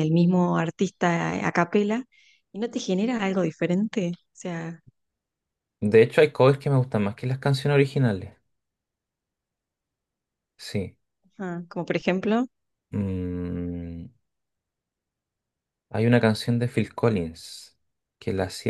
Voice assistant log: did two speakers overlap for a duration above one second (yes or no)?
no